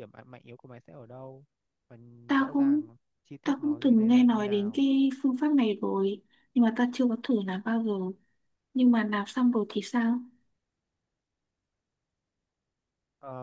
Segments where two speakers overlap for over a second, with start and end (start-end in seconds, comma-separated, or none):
3.4-4.8